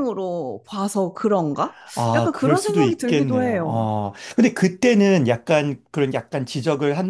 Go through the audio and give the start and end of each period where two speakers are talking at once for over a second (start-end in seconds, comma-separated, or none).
2.1-3.9